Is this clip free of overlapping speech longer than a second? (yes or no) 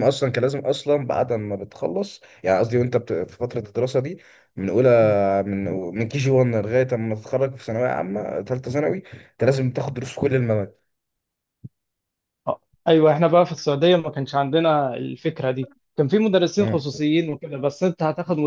yes